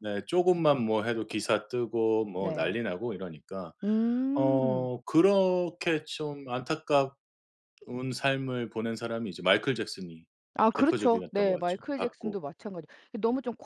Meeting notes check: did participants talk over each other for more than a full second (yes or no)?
yes